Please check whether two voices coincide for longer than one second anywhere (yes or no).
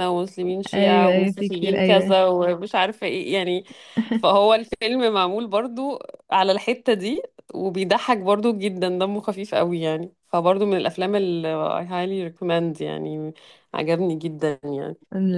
yes